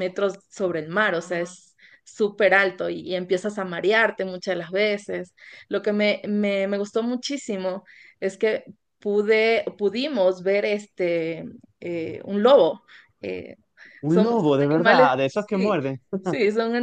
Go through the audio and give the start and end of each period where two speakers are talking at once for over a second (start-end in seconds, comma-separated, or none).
14.1-15.8